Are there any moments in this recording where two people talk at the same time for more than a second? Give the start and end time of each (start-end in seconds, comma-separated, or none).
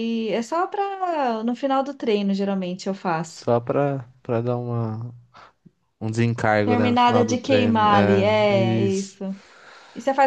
6.6-9.2